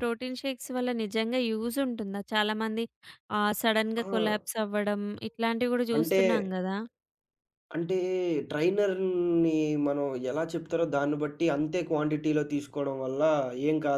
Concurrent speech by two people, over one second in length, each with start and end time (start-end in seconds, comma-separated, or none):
none